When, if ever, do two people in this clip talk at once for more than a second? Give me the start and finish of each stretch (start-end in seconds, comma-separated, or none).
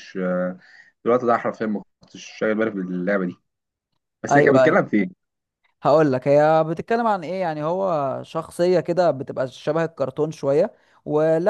none